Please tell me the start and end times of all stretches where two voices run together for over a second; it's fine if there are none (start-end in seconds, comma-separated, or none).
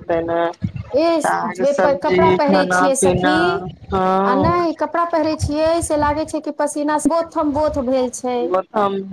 1.1-3.4